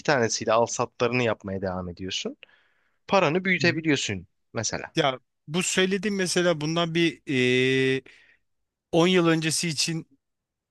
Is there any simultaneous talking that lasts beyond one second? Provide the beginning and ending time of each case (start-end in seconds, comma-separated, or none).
none